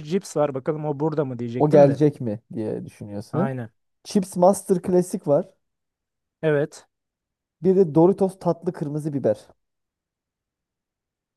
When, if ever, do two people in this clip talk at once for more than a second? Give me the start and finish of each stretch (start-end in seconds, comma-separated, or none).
none